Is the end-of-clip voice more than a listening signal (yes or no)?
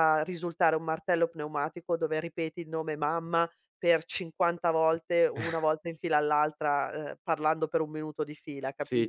yes